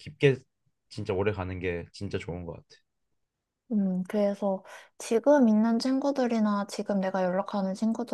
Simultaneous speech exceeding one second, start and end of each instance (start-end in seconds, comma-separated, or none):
none